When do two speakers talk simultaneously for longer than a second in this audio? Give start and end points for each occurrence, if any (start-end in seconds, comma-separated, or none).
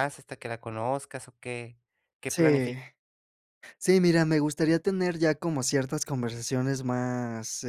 none